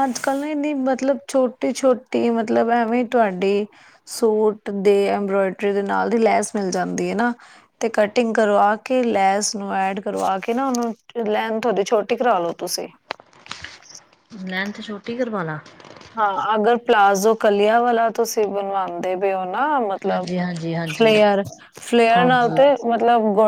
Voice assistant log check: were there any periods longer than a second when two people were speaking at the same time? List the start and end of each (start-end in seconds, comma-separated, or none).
none